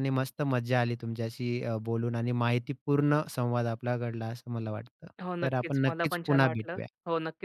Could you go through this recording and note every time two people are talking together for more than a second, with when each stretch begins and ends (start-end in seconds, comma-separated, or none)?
5.2-6.9